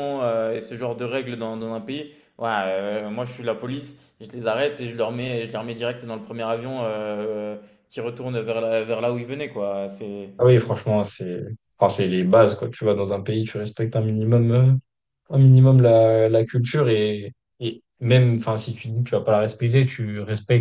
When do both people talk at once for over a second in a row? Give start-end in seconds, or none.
none